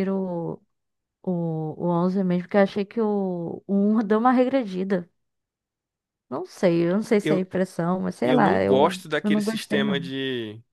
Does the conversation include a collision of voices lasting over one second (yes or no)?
yes